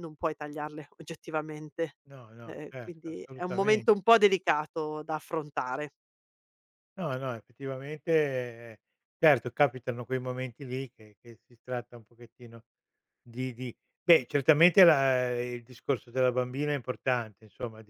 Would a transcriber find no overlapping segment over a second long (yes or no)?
no